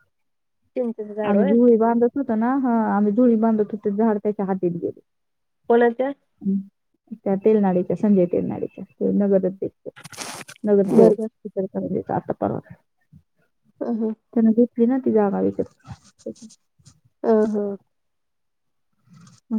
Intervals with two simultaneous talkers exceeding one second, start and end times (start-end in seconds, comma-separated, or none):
none